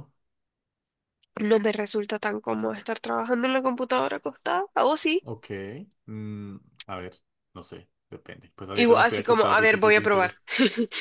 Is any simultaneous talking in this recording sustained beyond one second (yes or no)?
yes